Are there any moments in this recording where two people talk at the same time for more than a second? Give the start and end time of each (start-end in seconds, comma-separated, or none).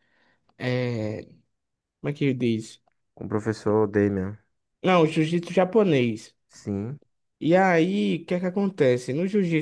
none